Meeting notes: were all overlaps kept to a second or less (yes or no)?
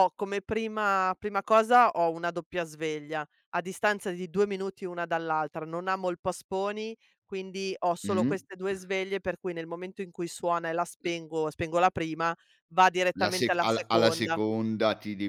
no